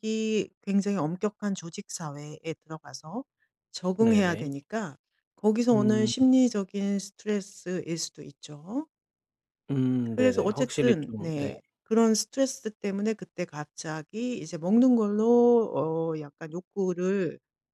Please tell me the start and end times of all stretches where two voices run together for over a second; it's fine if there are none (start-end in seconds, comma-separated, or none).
10.0-11.5